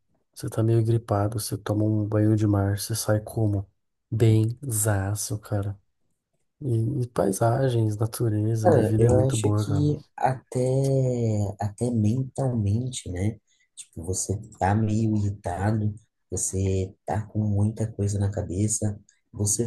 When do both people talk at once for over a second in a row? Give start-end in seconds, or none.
8.6-9.8